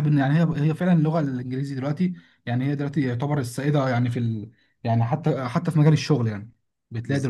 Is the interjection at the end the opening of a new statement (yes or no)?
no